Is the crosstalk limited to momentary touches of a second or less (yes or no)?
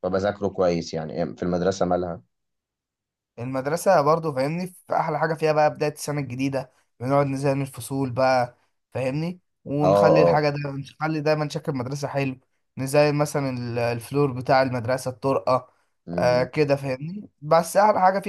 yes